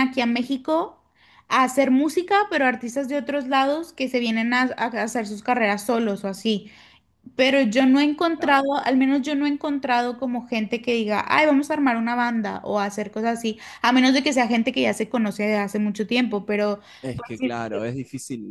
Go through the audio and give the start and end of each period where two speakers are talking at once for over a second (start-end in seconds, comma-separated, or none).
none